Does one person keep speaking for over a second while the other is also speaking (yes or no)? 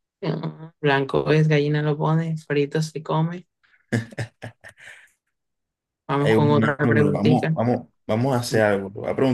yes